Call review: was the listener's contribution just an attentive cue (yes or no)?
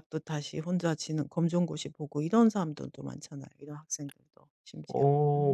no